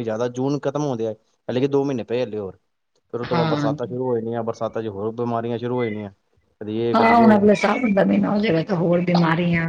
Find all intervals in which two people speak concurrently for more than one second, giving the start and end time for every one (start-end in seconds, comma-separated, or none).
none